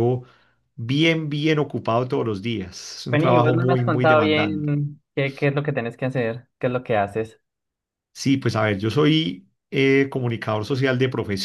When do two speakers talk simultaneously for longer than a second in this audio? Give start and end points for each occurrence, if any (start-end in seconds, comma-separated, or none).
3.1-4.7